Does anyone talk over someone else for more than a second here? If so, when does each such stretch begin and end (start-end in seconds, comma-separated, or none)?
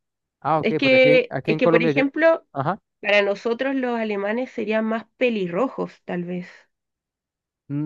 0.6-2.0